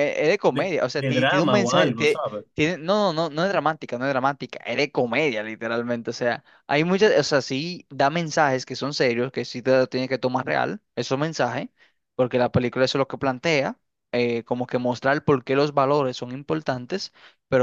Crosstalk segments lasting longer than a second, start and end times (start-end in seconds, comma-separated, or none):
0.5-2.5